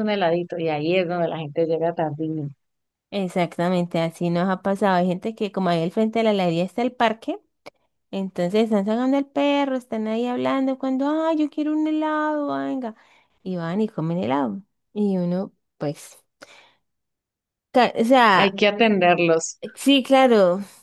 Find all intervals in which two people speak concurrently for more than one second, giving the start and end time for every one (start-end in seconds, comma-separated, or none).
none